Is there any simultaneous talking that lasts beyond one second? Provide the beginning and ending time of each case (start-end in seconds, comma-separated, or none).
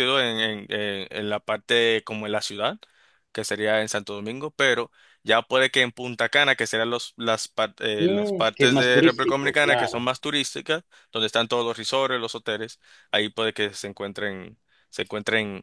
8.0-10.1